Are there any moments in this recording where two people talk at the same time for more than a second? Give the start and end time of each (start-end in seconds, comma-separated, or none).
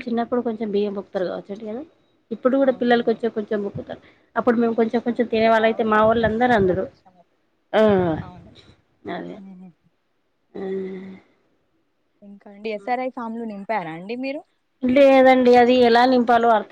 5.1-6.8